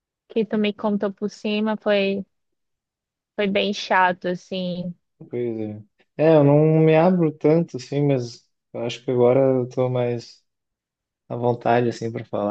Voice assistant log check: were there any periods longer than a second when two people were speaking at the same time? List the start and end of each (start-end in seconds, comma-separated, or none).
none